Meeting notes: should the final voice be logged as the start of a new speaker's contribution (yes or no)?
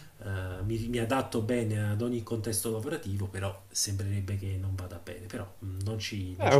yes